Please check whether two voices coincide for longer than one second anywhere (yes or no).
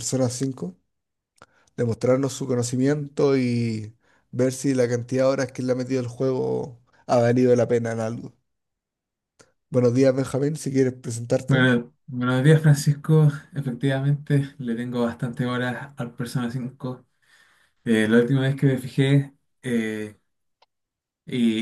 no